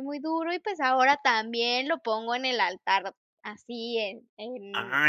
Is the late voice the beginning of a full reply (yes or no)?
yes